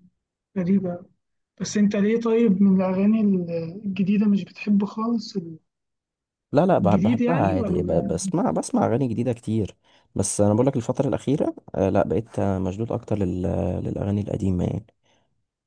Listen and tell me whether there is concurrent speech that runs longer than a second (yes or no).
yes